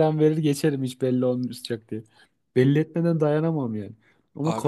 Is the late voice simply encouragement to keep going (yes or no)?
yes